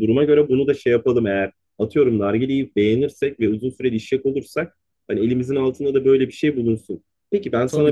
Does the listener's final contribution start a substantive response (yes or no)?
yes